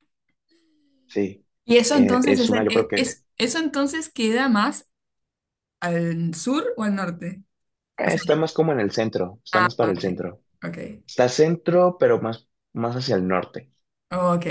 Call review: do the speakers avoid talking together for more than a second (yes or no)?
no